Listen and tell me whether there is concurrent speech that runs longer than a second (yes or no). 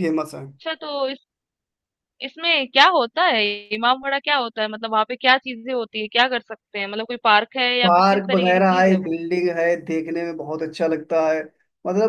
yes